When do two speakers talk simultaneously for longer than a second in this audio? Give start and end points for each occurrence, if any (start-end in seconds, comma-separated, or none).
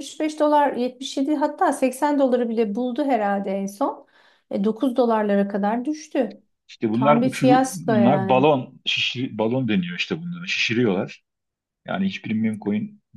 6.9-8.5